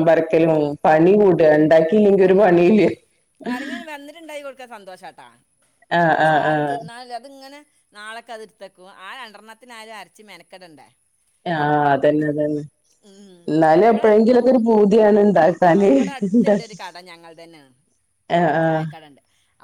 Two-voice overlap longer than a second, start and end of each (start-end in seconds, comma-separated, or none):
none